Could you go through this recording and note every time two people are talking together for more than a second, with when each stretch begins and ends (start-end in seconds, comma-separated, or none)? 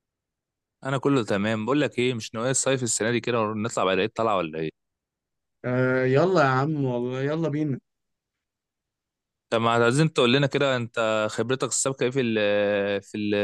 none